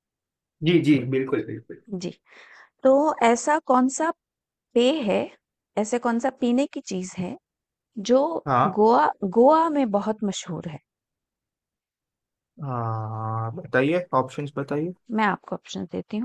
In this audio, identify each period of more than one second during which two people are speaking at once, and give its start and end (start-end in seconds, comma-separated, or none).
none